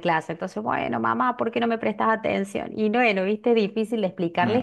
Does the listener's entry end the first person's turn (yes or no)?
no